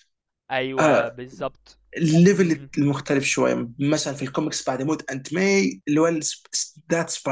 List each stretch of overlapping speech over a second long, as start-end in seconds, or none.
none